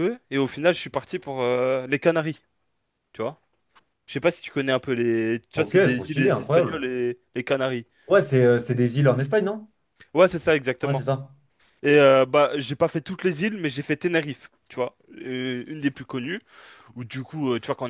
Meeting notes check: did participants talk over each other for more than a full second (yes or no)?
yes